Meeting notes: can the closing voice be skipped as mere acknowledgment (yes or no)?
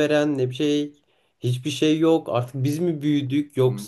yes